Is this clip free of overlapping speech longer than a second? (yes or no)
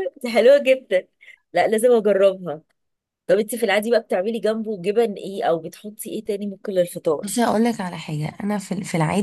yes